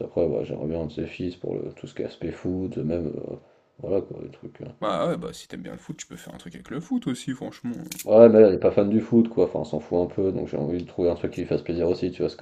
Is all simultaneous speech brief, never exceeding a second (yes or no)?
yes